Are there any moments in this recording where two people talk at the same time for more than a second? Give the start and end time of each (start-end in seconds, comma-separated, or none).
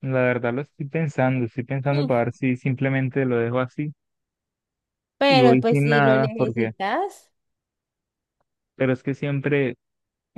5.3-6.7